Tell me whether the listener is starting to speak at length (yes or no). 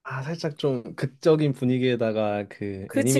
no